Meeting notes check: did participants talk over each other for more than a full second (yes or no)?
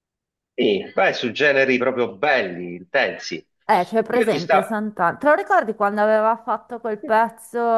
no